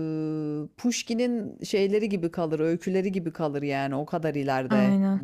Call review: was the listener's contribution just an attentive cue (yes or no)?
yes